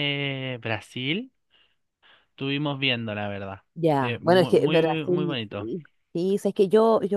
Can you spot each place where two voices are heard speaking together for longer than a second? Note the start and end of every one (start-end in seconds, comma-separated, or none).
4.0-5.7